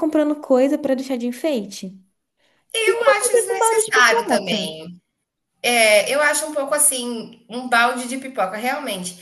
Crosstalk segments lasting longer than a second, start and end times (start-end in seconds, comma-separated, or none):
2.9-4.7